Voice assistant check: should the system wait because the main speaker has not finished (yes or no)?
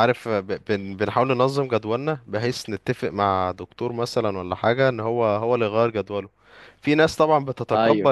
yes